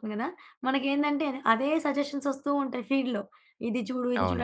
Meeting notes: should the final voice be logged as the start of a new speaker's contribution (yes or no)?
no